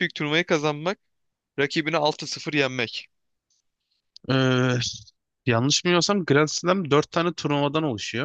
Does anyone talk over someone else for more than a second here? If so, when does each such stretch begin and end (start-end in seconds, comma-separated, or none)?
none